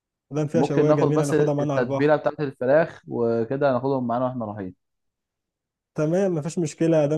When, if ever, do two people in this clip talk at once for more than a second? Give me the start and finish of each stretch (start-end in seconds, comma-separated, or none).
0.5-2.2